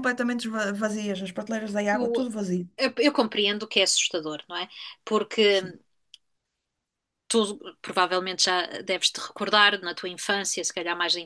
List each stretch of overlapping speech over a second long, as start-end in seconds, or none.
none